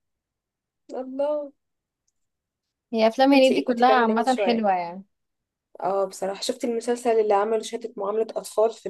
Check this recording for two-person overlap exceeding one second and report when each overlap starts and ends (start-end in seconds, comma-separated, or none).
3.3-4.7